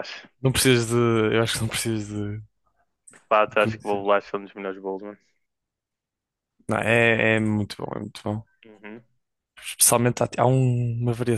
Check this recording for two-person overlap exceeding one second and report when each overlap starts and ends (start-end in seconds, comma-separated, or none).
none